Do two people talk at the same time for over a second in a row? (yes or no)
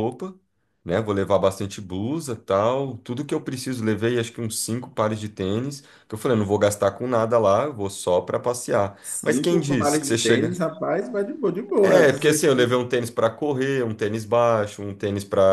yes